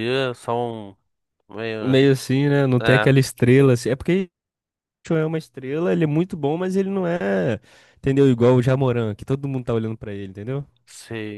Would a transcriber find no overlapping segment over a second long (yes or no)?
yes